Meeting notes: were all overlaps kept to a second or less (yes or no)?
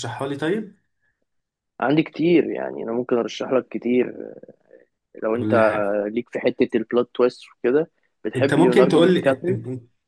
no